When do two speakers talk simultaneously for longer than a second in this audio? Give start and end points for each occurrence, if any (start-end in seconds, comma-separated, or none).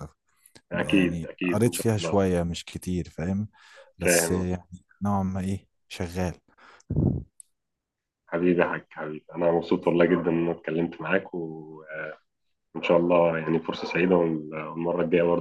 0.7-2.1